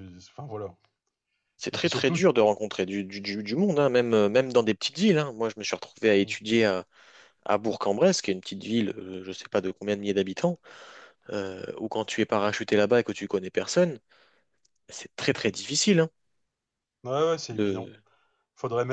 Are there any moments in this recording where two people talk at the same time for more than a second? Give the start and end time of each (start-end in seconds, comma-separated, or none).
none